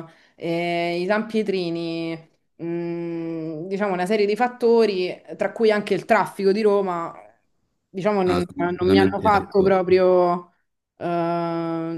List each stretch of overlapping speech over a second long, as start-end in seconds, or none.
8.2-9.8